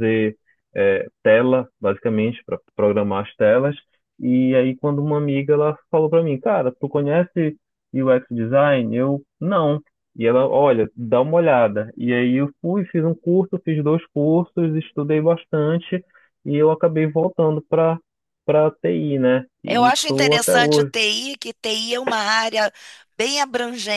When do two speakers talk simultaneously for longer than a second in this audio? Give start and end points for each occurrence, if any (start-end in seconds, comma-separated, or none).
19.7-20.9